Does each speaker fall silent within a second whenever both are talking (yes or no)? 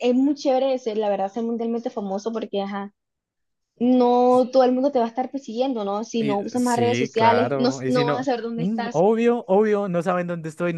no